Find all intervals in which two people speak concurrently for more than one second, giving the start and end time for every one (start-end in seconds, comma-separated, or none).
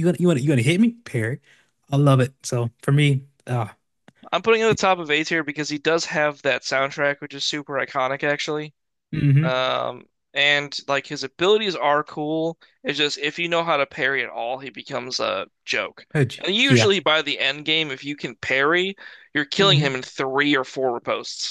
none